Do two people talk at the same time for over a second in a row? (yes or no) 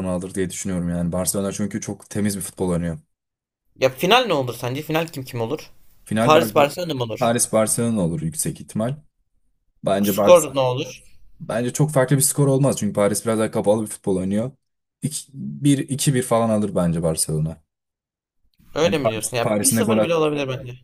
yes